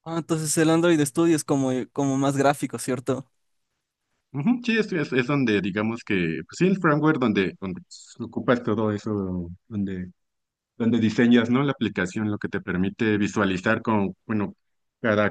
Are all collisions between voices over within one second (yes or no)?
yes